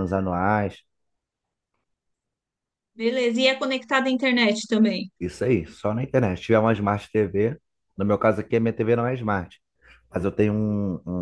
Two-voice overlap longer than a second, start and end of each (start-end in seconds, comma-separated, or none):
none